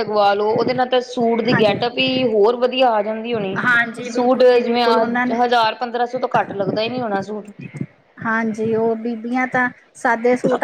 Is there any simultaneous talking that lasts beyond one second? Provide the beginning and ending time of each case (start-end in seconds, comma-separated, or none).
4.1-5.4